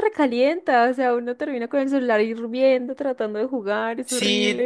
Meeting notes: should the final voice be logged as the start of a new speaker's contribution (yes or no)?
yes